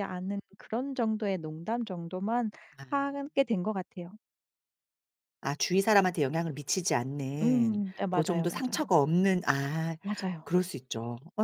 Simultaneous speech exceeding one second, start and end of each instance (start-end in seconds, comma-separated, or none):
7.4-8.9